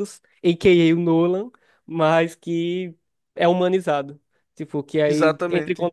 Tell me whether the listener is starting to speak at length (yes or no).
no